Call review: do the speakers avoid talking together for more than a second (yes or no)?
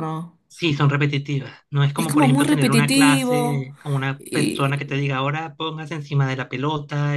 no